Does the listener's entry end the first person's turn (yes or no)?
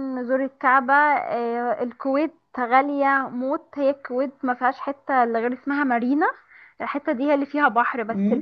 no